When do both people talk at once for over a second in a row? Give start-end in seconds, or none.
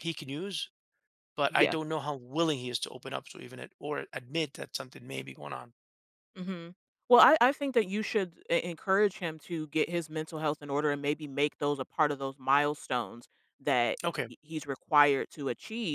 none